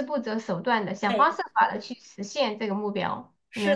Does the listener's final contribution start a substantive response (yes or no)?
yes